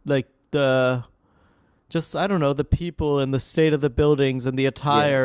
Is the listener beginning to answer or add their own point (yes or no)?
no